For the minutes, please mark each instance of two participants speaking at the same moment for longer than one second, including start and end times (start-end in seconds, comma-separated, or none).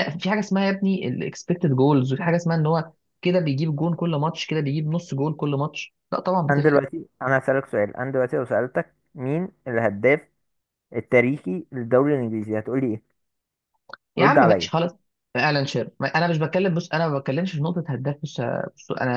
none